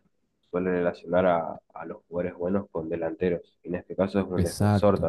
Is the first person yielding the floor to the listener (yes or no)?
no